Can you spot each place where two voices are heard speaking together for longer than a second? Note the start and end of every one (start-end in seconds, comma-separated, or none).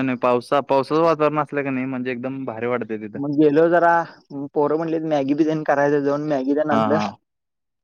none